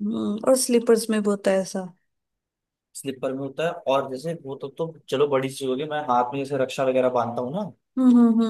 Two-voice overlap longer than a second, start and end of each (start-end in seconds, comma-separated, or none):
none